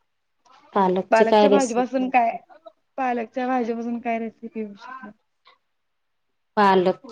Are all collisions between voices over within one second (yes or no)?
no